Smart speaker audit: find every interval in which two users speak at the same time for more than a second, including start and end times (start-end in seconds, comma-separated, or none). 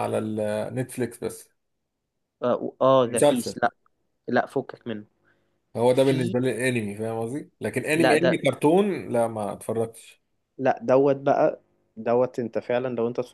none